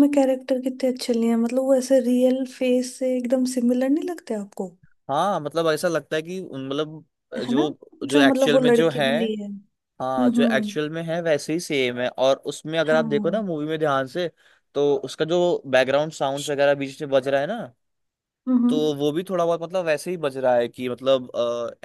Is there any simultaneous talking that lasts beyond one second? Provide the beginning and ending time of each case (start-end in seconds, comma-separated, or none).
7.5-9.1